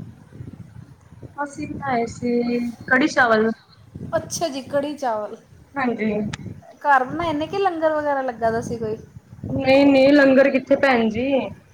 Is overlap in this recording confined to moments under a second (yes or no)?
yes